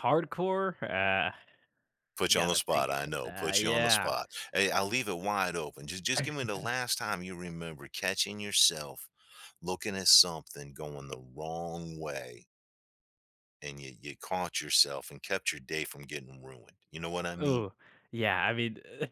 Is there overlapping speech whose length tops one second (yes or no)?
yes